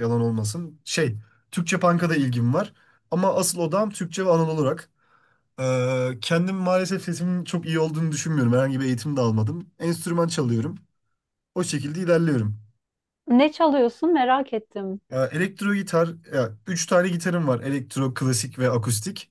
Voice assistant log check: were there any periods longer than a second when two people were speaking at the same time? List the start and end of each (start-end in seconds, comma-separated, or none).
none